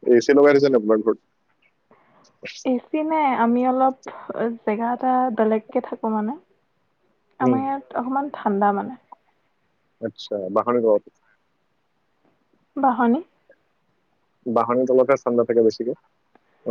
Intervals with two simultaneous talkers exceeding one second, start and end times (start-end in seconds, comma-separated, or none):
none